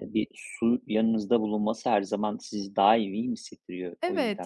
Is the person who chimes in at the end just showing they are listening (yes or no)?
no